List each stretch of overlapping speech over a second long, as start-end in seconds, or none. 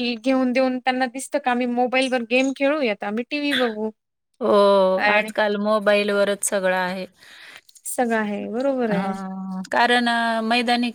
none